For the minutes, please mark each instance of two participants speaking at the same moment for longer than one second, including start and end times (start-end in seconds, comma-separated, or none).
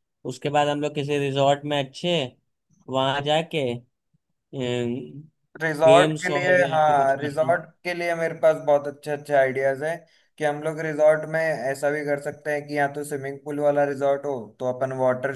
5.8-7.6